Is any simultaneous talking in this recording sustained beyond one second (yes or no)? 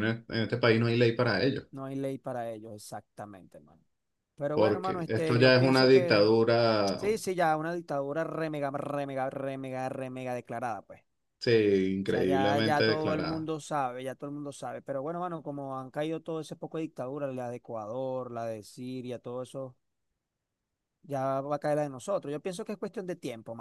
yes